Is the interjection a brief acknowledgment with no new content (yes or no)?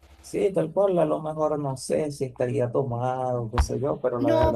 no